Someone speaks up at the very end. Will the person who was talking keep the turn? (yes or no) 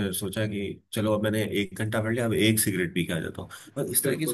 yes